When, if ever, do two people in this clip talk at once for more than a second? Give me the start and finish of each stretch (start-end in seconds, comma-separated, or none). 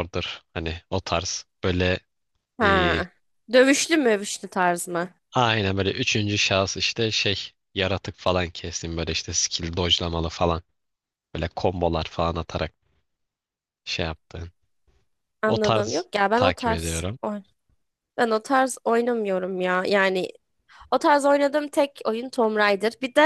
15.4-17.2